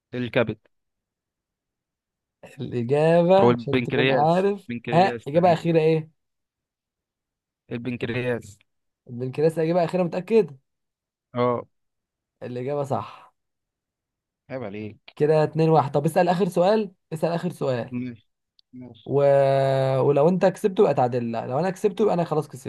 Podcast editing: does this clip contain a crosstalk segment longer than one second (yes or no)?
yes